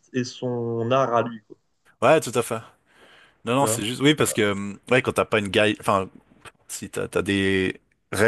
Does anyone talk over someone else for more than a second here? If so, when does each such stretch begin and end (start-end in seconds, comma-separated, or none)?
none